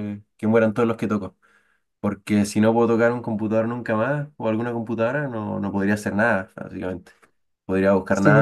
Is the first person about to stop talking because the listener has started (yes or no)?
no